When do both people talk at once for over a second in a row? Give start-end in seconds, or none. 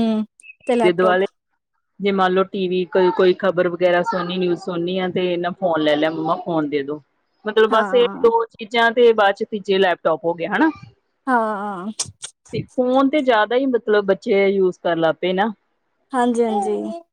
none